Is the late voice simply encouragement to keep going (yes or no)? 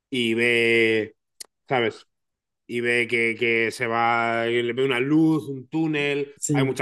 yes